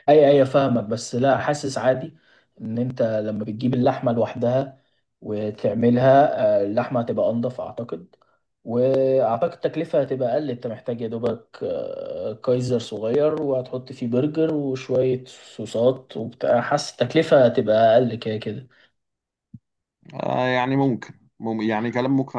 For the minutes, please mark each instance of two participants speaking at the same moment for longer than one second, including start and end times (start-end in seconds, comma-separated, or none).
none